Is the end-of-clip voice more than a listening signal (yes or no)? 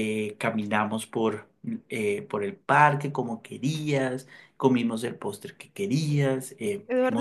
yes